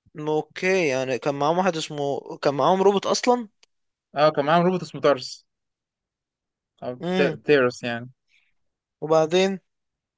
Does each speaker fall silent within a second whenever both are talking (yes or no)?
yes